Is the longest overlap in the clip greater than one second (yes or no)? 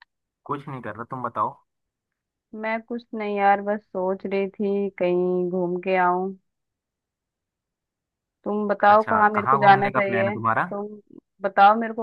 yes